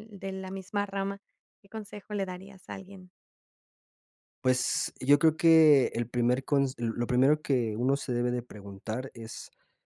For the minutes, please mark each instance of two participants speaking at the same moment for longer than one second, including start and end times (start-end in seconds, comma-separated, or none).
none